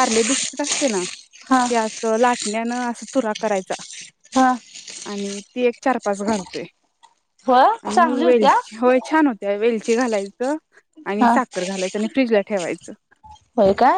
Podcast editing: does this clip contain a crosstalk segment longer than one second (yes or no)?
no